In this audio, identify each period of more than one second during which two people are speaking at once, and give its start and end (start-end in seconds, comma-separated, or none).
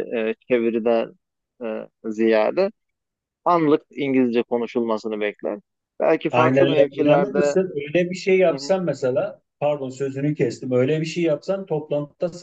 6.3-7.6